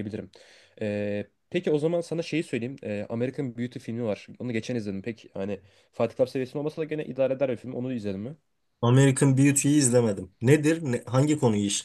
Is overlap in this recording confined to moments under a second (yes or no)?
yes